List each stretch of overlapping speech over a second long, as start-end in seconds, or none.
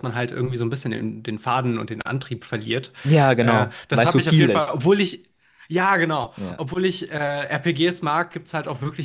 3.4-4.8